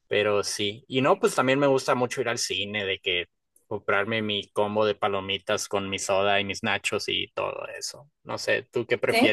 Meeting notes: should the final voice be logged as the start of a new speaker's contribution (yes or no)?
no